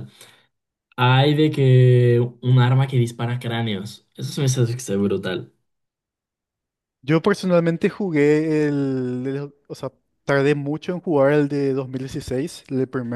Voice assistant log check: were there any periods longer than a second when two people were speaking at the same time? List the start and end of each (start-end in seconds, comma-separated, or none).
none